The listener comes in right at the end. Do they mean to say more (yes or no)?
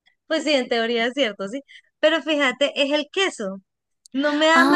no